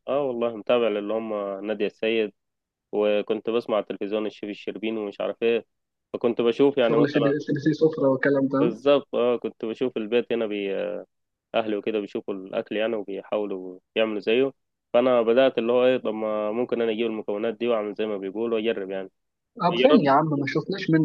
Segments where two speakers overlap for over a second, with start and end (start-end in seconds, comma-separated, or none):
none